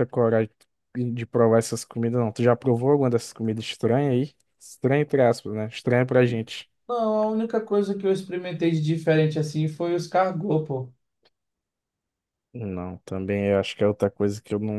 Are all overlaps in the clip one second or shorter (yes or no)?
yes